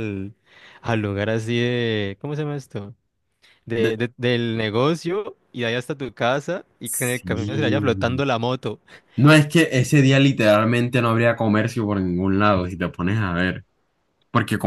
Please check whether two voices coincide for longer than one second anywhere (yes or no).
yes